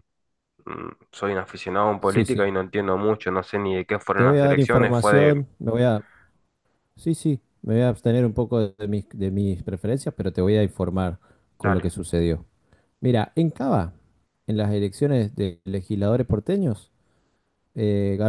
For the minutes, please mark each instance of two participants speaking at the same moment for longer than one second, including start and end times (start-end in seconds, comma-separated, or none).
4.2-5.4